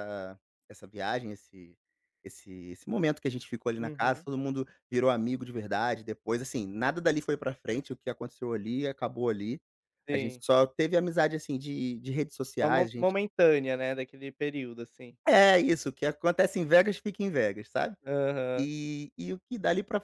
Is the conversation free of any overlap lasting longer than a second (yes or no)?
yes